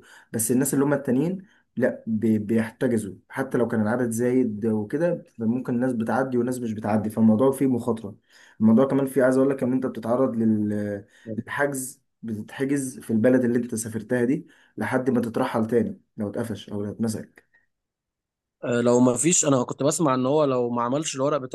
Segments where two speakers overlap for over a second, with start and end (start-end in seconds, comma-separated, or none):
none